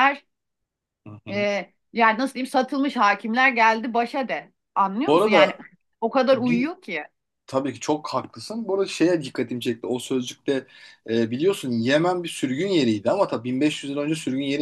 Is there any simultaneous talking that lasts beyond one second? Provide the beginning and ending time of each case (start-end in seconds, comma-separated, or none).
none